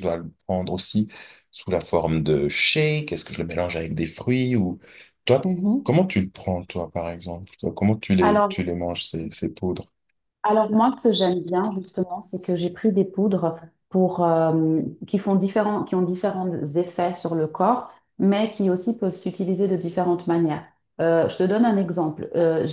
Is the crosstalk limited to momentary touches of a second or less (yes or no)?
yes